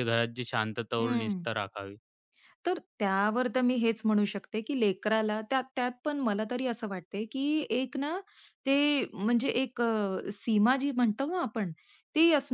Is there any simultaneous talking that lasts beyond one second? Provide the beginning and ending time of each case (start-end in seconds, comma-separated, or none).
none